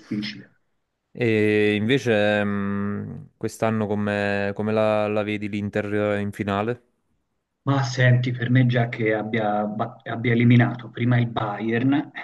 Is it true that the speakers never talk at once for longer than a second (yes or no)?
yes